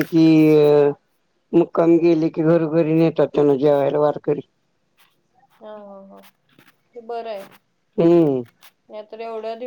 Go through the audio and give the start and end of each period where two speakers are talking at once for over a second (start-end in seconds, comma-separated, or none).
none